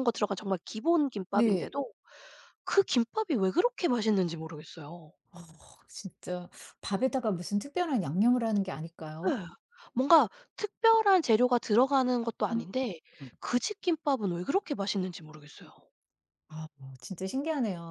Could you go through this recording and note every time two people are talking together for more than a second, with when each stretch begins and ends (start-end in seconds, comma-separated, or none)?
none